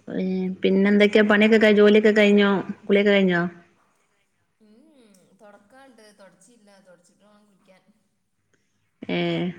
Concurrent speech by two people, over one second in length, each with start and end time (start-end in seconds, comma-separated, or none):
none